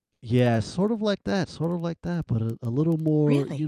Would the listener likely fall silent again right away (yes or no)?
no